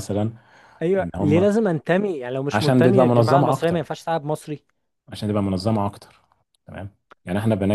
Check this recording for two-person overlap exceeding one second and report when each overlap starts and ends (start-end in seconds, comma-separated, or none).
2.5-3.9